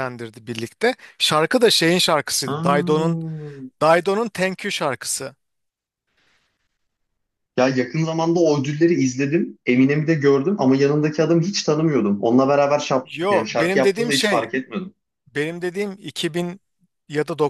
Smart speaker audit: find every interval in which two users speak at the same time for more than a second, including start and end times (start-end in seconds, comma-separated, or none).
13.0-14.5